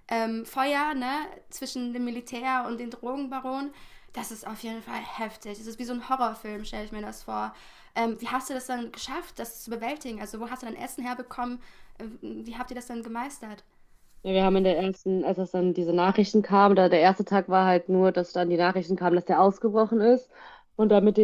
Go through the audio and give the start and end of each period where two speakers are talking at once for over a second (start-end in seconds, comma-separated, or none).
none